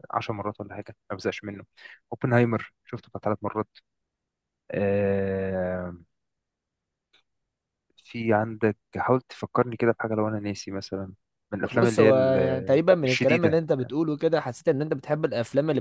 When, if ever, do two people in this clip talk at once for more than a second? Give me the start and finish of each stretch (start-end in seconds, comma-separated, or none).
11.7-13.6